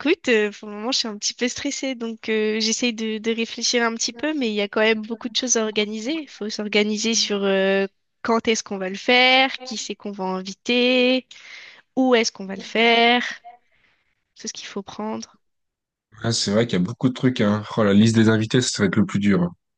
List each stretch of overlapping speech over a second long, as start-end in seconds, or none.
none